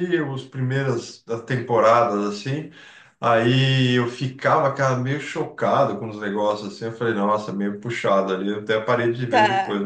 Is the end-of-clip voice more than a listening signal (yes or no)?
no